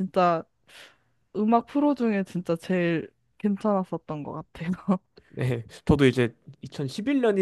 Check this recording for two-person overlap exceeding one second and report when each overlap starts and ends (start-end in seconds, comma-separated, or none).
none